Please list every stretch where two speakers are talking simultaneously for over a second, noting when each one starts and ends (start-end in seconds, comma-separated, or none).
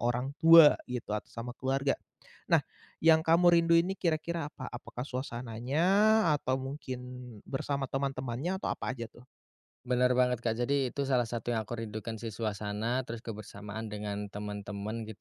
none